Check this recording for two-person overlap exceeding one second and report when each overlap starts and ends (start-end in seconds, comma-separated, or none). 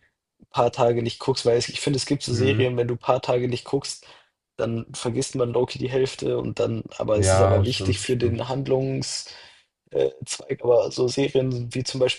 7.1-8.4